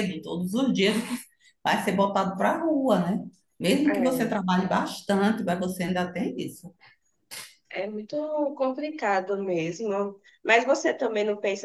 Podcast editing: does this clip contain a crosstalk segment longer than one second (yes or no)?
no